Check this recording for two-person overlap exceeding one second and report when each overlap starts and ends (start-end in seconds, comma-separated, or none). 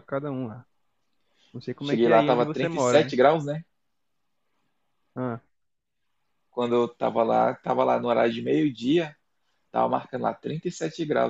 1.8-3.2